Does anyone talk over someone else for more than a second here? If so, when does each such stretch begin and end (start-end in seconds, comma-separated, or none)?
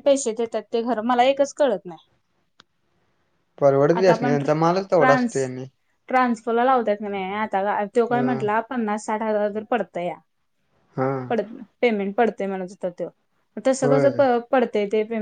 4.0-5.4